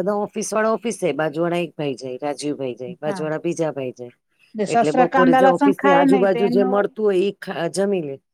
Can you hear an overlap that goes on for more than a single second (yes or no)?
yes